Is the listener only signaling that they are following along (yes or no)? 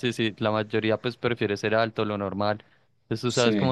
yes